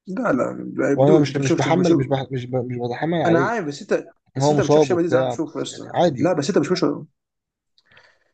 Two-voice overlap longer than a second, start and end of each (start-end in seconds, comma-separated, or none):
0.9-2.2, 4.3-6.4